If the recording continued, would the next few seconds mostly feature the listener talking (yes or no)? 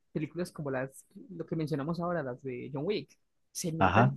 yes